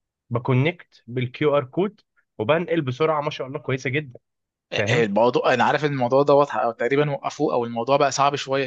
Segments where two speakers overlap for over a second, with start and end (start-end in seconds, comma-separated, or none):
none